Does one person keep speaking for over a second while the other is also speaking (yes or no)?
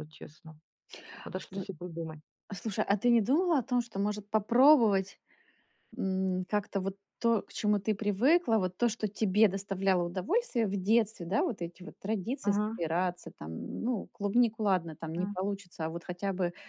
no